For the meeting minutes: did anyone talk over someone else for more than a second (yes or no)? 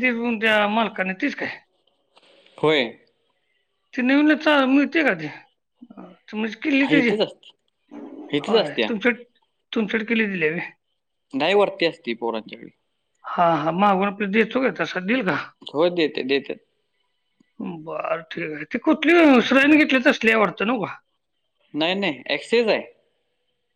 no